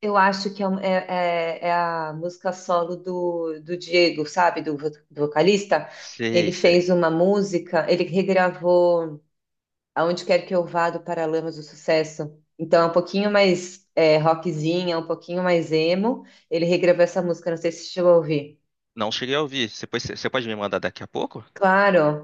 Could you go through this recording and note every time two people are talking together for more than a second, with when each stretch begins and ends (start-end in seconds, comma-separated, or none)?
none